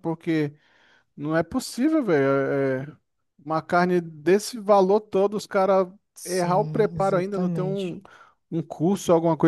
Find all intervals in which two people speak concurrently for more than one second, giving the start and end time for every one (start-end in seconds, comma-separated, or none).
6.2-8.0